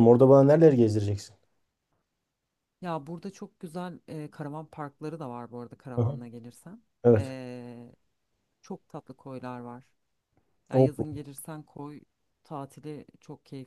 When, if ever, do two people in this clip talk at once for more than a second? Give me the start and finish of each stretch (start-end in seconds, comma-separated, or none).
none